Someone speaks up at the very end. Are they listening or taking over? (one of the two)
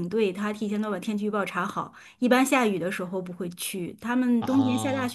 listening